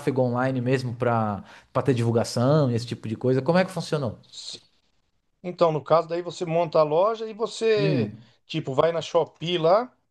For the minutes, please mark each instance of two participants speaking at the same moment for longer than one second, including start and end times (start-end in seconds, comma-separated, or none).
none